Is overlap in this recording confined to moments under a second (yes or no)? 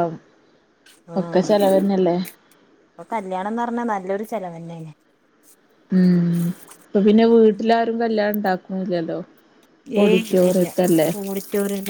yes